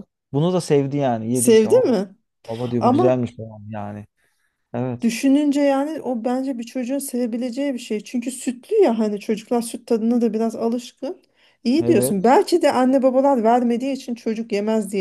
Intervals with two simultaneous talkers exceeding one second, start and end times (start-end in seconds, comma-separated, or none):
none